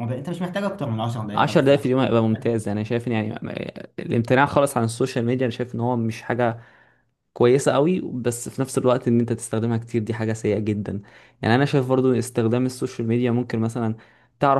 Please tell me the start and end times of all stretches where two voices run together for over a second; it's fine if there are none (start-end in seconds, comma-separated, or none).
none